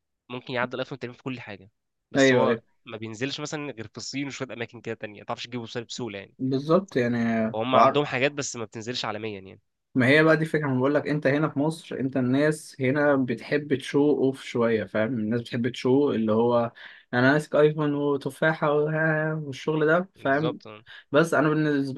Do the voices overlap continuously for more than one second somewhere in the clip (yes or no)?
no